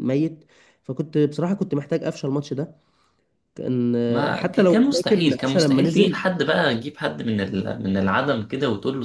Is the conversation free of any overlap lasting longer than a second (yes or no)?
no